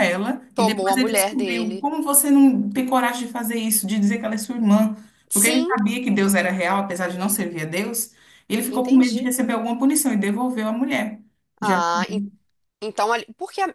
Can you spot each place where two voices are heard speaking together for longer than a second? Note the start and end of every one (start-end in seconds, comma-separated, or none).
0.5-1.9